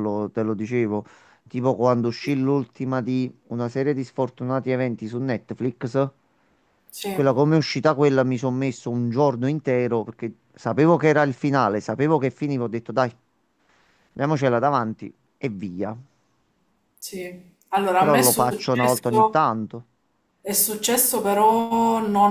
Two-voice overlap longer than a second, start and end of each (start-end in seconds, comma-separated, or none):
17.9-19.4